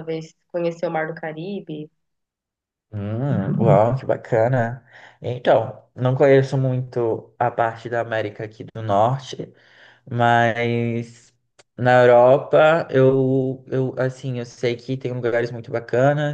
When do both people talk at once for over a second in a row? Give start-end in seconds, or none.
none